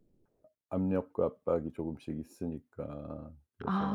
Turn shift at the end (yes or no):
yes